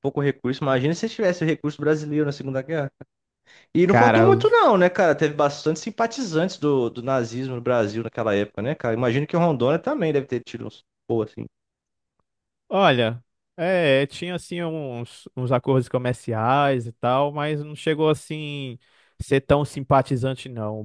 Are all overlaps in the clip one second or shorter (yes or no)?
yes